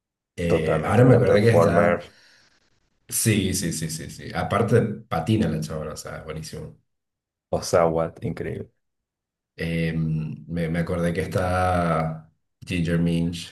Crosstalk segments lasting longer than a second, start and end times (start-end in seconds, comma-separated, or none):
0.5-2.0